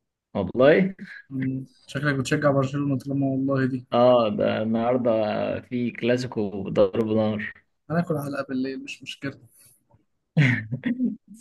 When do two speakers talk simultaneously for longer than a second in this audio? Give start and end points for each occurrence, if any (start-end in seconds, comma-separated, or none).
none